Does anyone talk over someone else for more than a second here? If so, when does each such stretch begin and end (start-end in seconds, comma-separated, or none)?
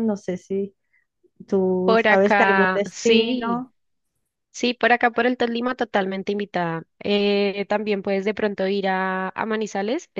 1.8-3.6